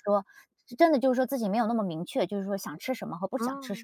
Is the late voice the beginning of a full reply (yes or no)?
no